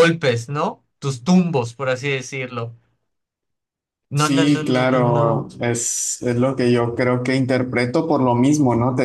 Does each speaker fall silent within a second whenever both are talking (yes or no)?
no